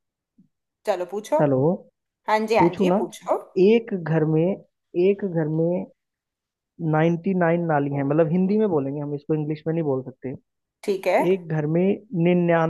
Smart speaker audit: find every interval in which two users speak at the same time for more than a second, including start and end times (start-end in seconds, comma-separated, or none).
none